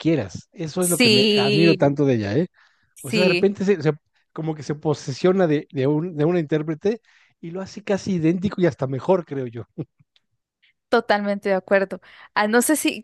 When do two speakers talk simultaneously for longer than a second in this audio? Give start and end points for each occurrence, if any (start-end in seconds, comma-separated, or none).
0.8-2.0